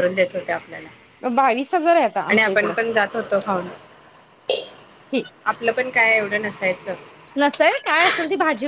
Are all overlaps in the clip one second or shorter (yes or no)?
yes